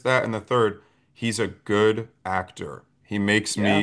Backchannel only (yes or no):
yes